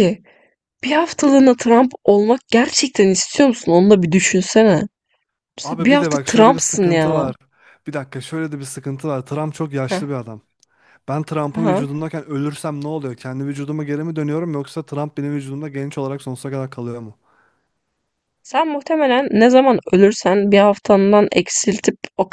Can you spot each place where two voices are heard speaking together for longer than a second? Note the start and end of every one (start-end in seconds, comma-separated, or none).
5.6-7.3